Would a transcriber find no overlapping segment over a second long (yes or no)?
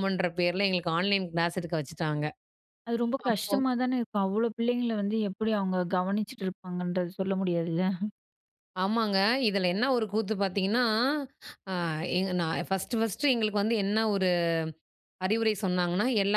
yes